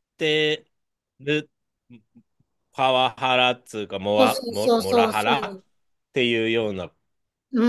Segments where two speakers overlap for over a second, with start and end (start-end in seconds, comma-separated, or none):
4.2-5.6